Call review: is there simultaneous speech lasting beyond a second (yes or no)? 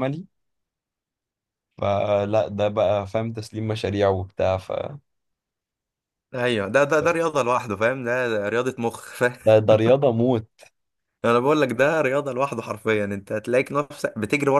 no